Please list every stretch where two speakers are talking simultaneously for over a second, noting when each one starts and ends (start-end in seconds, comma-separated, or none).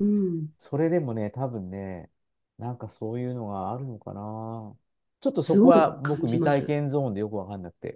5.4-6.8